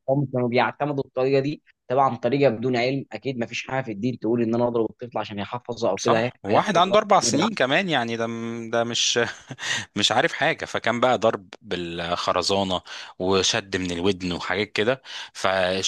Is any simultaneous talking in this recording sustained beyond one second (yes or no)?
yes